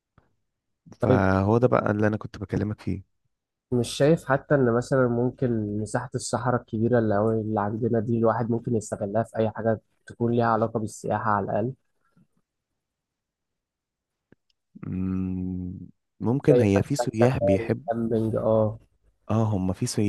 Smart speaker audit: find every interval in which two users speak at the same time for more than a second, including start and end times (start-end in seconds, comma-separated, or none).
16.5-17.9